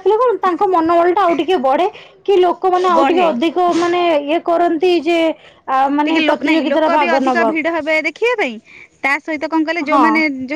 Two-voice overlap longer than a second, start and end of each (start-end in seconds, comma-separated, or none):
6.1-7.7